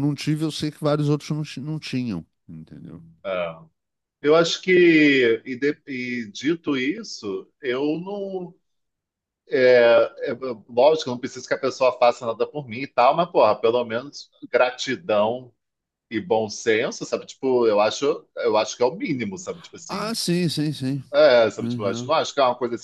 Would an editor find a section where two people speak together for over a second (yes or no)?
no